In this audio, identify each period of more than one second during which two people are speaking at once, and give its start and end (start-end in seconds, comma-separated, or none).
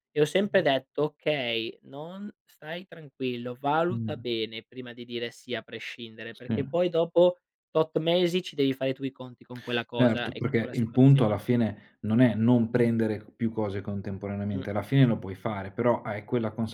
9.9-11.4